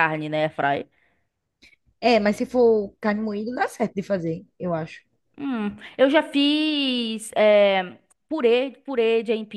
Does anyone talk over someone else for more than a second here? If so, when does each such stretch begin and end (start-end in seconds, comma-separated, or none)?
none